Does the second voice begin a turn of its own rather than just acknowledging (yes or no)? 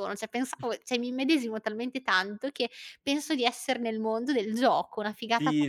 yes